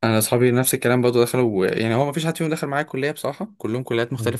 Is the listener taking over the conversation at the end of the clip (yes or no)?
yes